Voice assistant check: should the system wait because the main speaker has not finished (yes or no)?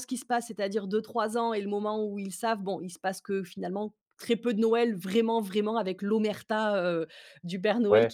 yes